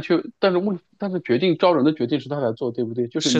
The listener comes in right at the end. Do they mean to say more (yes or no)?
yes